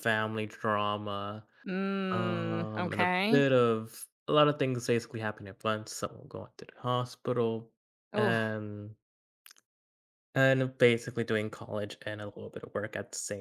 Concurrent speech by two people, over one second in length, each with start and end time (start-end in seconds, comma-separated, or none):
2.1-3.4